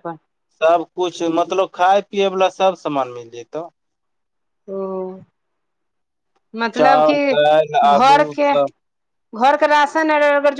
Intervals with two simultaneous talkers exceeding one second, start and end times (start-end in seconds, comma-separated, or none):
6.8-8.5